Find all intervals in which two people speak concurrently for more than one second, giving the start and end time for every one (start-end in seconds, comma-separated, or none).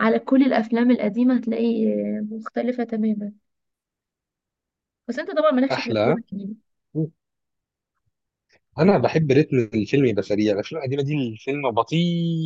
none